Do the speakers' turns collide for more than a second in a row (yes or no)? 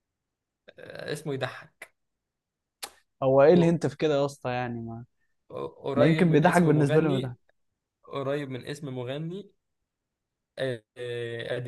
yes